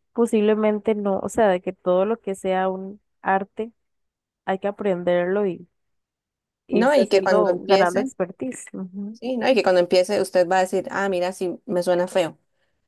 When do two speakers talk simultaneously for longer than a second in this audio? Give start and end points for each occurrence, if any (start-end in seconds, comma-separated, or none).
6.7-8.1